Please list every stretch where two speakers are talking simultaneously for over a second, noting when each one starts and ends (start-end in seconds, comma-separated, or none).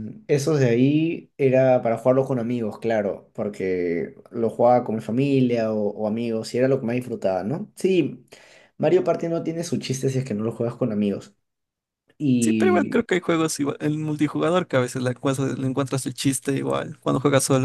none